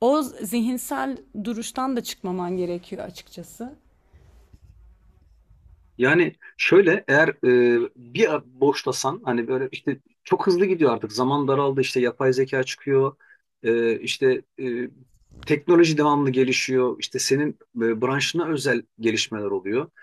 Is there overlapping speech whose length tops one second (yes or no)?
no